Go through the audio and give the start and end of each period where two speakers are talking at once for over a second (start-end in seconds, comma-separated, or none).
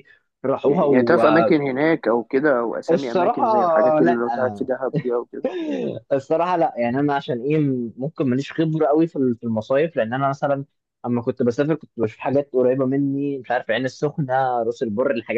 2.9-4.2